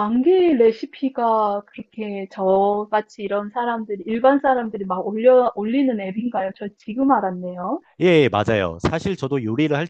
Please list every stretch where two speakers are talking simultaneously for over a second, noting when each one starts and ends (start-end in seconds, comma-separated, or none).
none